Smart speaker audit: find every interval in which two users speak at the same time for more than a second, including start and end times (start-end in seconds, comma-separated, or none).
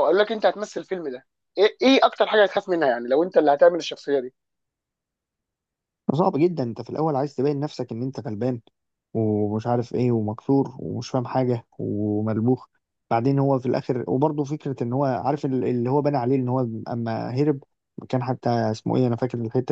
none